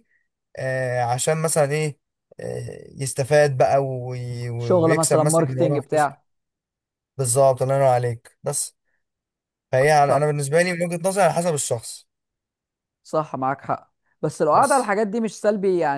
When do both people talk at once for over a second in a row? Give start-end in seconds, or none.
4.6-6.1